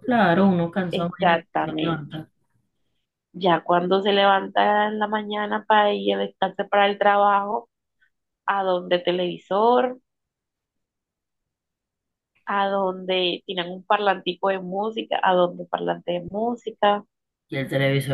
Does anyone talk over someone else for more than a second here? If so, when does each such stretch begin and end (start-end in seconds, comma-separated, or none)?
1.0-2.2